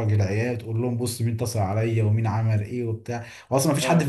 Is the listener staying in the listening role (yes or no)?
yes